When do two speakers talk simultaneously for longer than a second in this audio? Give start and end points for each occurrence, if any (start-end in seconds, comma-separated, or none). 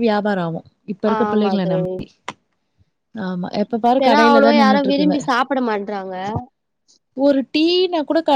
none